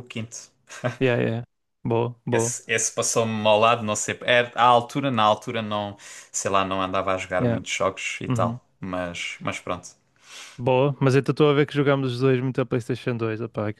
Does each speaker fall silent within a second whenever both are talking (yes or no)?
yes